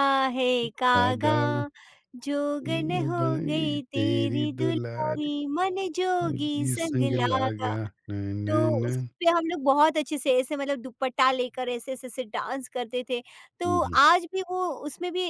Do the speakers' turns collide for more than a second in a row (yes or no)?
yes